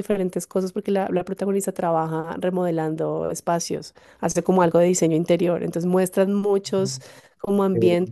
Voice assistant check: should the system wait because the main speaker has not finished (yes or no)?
yes